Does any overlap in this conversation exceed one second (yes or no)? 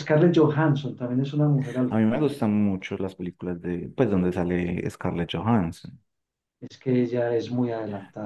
no